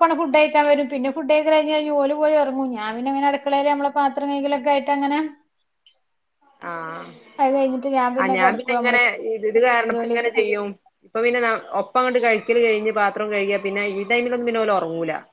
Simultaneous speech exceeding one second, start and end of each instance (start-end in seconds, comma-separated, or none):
none